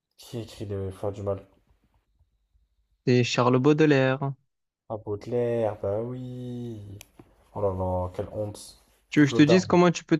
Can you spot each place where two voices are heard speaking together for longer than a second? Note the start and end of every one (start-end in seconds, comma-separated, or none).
none